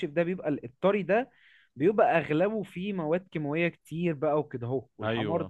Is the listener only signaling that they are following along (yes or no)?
yes